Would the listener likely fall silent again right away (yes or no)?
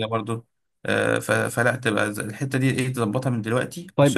no